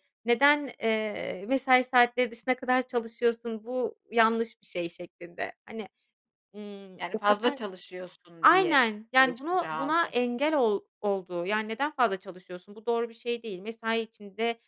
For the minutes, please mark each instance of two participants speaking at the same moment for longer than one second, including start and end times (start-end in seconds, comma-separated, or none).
8.4-10.1